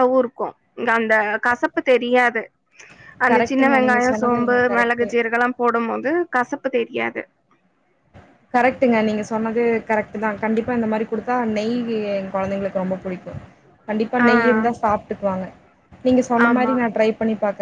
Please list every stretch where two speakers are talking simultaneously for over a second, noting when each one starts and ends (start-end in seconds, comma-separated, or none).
3.3-5.1